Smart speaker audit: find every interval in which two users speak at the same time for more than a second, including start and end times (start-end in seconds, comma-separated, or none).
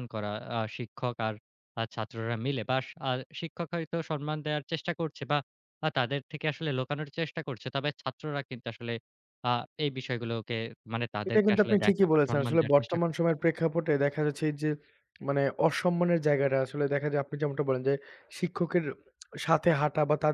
11.3-13.3